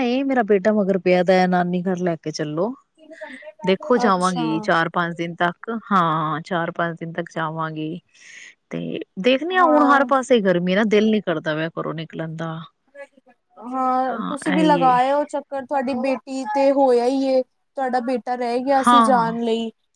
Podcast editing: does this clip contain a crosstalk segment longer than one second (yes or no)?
no